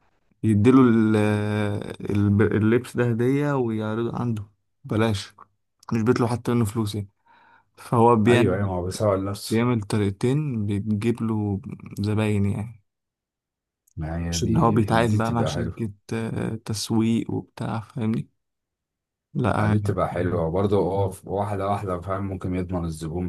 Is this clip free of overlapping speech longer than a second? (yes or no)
no